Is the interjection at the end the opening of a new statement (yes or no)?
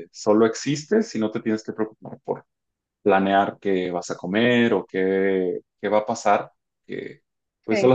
no